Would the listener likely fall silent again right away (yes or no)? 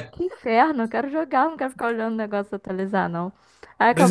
no